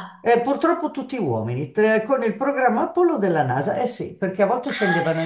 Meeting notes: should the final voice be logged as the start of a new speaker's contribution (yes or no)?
no